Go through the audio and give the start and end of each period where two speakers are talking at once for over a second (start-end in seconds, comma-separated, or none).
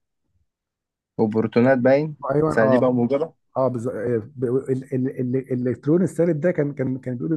none